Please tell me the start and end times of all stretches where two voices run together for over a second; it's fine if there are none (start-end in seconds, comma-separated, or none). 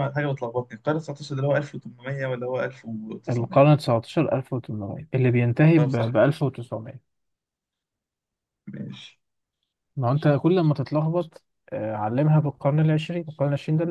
none